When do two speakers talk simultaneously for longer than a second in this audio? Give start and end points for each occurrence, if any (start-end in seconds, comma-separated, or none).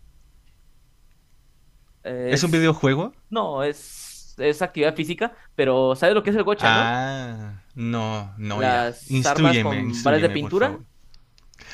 8.5-10.8